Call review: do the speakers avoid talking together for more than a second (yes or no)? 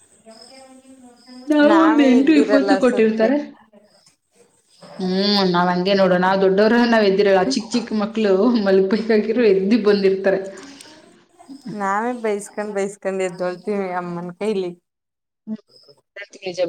no